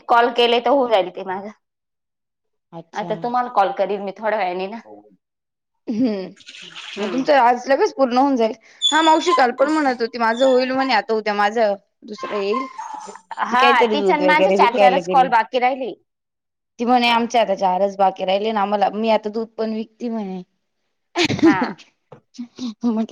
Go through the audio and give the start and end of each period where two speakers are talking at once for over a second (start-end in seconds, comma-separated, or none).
13.5-15.3